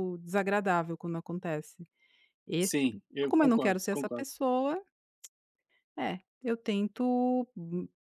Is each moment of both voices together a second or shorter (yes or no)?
no